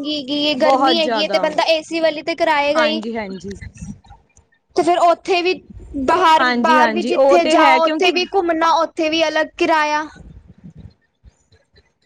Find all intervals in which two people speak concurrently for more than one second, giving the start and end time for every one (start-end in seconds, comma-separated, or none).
6.4-8.1